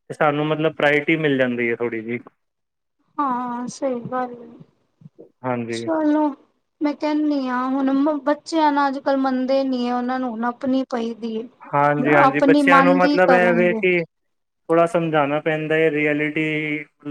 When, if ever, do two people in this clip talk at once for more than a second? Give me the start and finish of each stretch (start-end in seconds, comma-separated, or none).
12.2-13.8